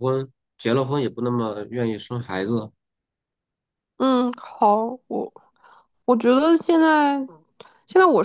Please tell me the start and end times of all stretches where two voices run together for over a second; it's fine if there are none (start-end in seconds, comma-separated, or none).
none